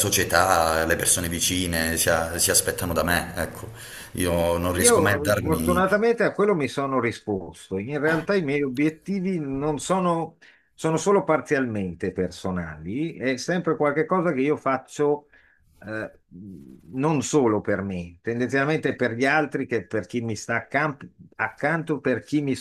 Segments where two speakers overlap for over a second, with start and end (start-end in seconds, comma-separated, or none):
4.8-6.0